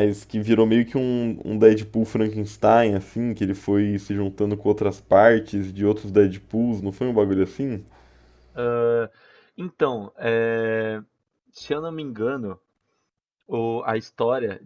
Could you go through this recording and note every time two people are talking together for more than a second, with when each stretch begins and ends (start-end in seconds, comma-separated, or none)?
none